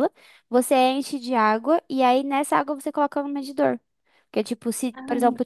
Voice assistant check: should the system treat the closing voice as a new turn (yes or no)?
no